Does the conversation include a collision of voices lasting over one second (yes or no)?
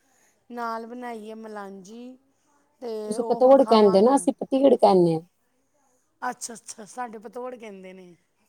no